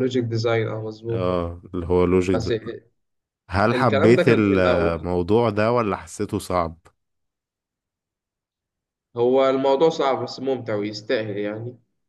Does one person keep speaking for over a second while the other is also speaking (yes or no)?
yes